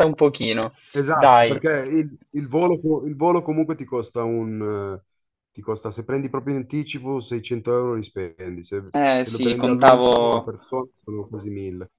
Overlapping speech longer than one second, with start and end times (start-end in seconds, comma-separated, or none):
8.9-10.5